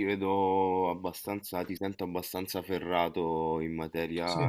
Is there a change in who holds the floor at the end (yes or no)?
no